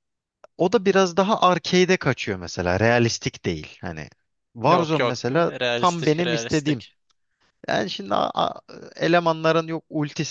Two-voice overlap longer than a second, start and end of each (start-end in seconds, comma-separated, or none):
4.7-6.8